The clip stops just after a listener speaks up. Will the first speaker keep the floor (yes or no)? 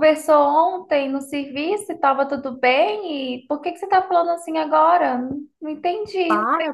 no